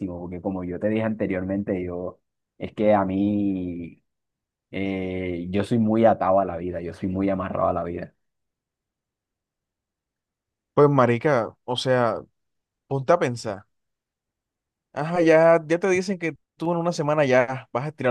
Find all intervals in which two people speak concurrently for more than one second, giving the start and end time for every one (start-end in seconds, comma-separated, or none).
none